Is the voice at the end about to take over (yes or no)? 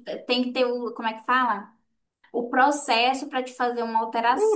yes